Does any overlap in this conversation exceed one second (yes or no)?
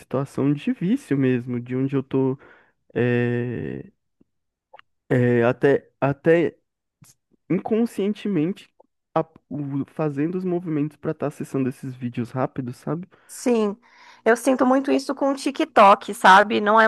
no